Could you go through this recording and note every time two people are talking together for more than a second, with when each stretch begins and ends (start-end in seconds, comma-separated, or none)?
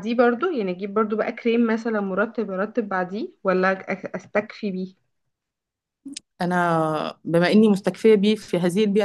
none